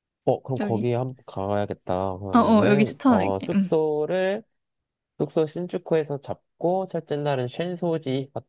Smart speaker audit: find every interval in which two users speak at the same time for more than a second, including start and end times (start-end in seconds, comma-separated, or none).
2.3-3.8